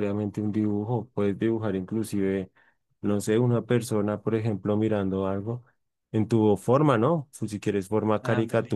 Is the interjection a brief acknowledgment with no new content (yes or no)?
yes